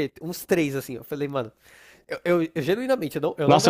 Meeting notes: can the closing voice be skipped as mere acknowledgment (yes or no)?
no